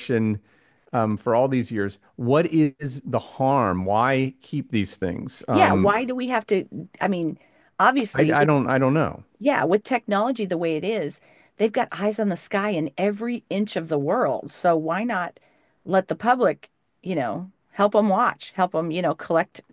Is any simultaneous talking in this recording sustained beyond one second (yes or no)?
no